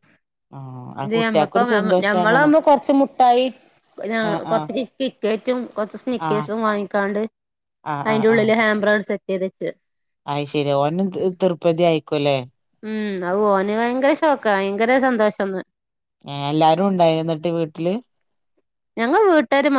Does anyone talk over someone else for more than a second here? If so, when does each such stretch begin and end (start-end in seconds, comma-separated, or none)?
1.0-2.5